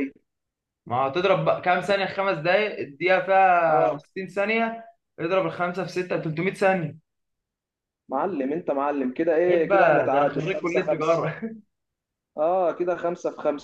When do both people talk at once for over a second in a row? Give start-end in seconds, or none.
9.5-11.3